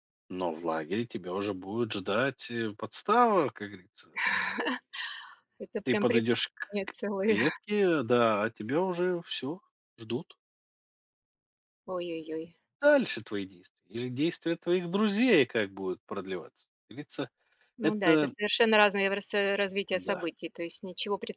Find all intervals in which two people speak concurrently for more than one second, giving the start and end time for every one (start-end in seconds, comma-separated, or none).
5.8-7.4